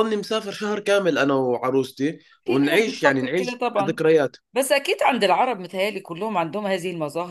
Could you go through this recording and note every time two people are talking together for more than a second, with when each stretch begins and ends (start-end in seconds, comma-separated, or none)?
2.4-4.0